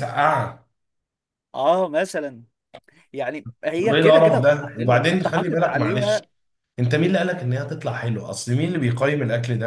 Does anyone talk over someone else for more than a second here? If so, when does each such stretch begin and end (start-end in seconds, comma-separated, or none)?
3.8-6.2